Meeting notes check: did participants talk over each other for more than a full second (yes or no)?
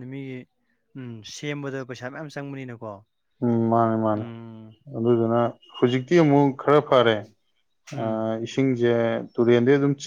no